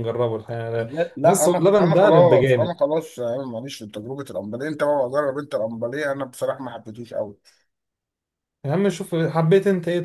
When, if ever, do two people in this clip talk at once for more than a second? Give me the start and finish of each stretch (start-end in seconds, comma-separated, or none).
0.8-2.8